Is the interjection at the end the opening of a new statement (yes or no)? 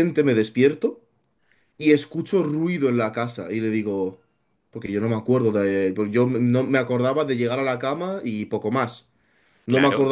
no